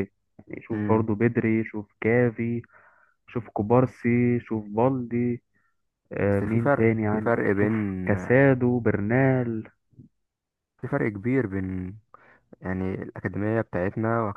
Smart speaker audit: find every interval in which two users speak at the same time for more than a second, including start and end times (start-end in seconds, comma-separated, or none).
6.2-8.1